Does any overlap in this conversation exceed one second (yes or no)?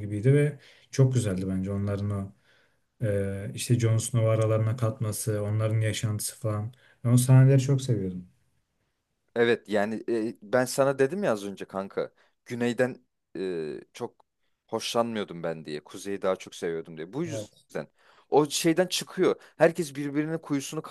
no